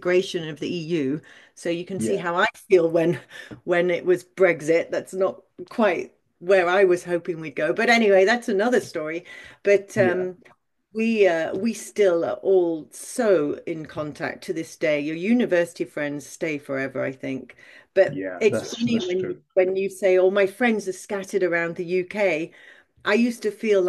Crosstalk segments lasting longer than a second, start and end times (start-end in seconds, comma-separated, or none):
18.1-19.4